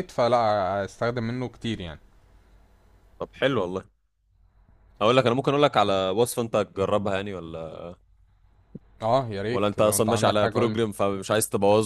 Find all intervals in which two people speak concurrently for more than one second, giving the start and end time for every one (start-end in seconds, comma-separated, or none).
9.5-10.8